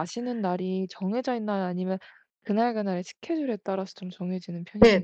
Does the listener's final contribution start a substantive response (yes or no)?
yes